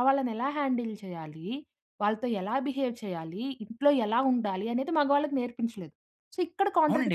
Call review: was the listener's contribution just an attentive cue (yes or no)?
no